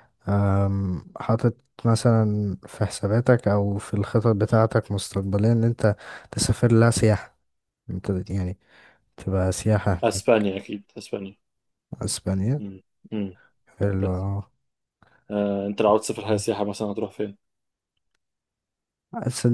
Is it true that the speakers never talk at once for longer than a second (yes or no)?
yes